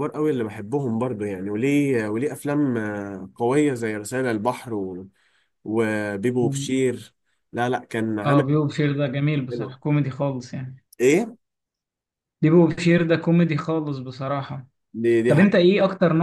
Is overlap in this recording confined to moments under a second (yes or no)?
yes